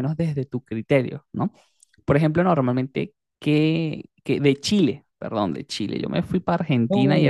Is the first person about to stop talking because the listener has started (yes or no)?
yes